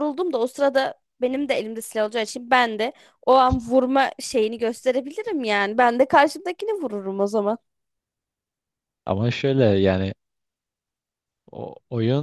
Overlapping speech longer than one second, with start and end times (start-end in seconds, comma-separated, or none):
none